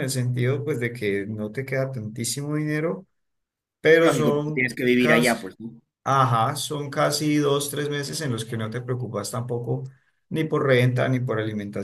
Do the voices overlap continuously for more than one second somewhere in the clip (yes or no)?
yes